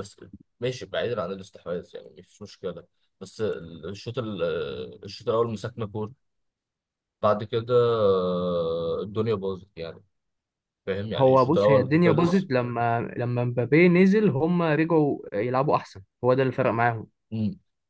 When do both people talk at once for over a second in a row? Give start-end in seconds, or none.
11.2-12.5